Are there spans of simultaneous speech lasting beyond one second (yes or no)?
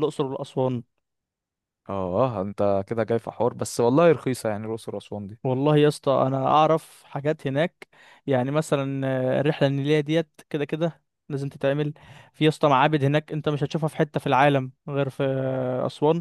no